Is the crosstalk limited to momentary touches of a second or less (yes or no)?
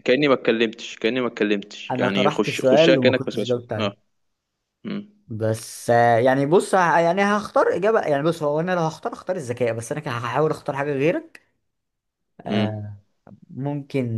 no